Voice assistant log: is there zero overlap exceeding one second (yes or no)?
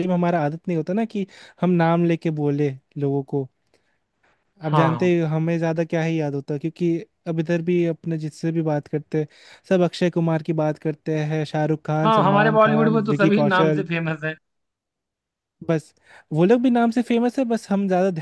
no